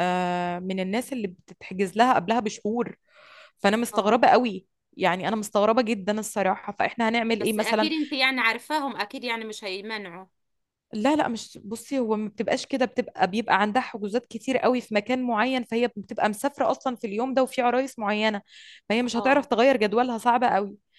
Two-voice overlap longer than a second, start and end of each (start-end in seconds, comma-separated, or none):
none